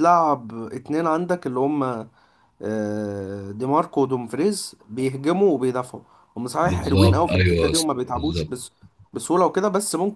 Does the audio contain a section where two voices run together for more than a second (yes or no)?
yes